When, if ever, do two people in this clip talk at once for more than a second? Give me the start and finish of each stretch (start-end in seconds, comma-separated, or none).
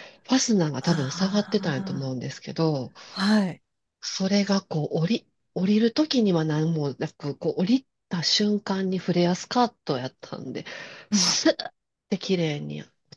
0.9-2.1